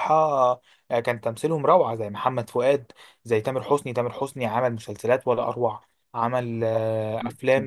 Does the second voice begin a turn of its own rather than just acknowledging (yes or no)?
no